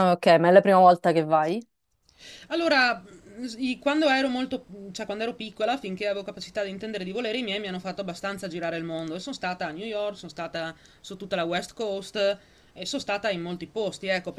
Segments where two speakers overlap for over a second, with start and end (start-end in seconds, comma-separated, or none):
none